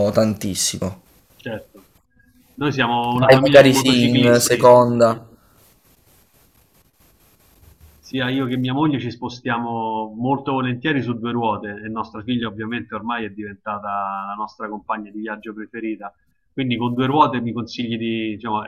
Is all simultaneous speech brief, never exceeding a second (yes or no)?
no